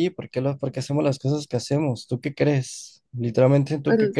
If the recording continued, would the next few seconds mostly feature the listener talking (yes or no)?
no